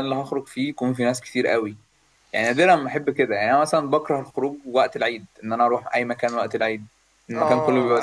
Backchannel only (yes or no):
no